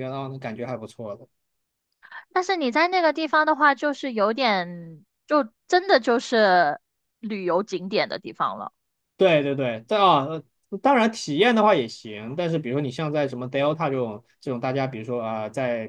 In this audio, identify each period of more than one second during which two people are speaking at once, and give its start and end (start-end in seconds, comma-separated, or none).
none